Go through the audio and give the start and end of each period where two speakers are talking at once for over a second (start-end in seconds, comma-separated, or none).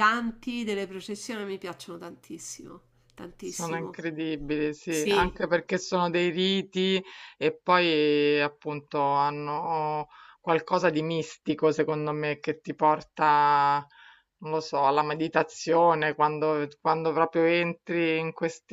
none